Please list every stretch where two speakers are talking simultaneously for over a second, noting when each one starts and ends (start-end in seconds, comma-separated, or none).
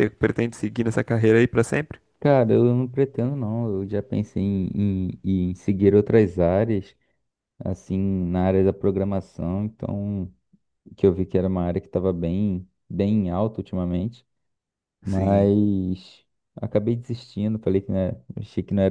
none